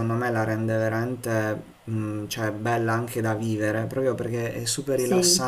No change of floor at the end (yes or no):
yes